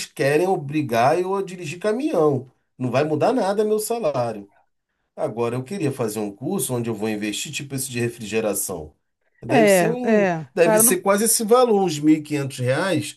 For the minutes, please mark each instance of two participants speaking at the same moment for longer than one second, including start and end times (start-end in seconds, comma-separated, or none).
9.5-11.0